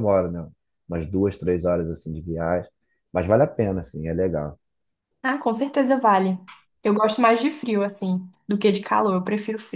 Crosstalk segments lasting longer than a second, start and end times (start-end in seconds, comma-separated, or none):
none